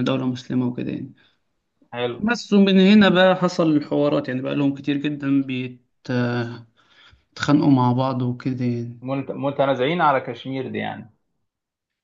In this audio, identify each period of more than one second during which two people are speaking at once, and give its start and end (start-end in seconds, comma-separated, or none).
none